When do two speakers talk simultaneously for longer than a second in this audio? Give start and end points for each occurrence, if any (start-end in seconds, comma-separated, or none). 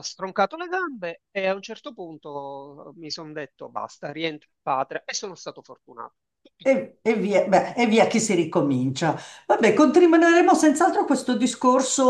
none